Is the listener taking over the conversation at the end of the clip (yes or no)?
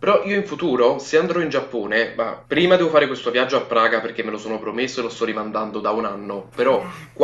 no